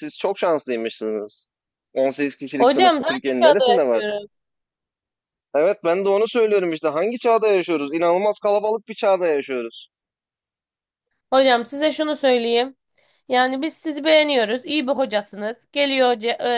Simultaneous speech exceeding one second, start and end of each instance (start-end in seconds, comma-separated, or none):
2.6-4.0